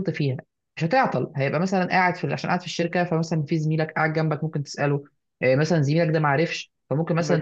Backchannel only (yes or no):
yes